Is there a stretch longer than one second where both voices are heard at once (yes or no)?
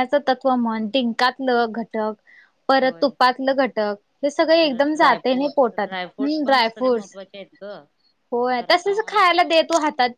yes